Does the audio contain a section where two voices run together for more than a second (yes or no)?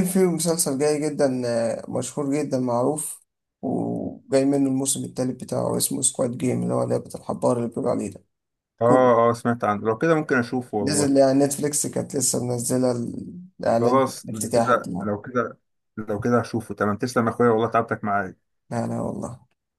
yes